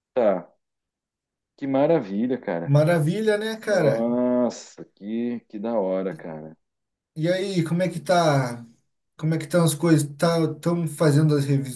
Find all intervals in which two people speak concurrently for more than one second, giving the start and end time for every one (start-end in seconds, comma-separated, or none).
none